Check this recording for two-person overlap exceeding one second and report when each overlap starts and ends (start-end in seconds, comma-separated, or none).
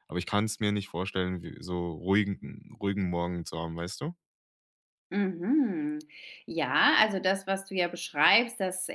none